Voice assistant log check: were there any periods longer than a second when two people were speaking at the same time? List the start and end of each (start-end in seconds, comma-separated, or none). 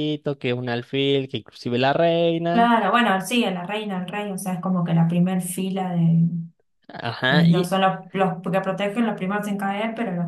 none